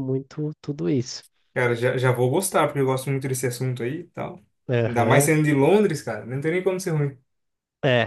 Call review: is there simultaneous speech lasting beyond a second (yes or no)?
no